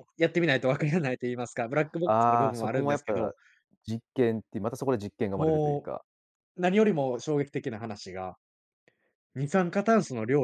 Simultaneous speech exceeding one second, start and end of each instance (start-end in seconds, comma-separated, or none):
2.0-3.3